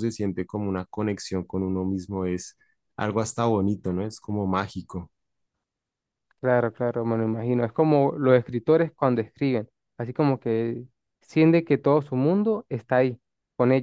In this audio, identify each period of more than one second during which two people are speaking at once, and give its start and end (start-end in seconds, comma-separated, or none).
none